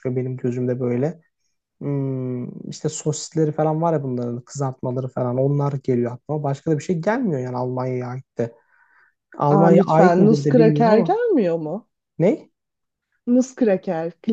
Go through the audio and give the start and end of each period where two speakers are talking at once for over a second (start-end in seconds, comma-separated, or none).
9.5-11.2